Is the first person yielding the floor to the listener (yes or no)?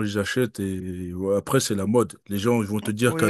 no